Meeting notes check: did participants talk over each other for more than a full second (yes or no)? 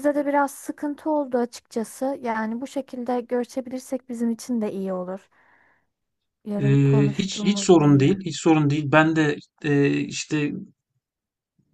yes